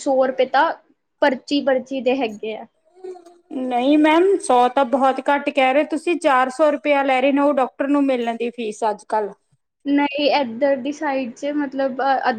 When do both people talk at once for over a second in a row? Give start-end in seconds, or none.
none